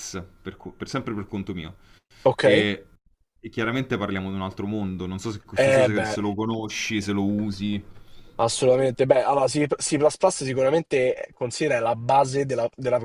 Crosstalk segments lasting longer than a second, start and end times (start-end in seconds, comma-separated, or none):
none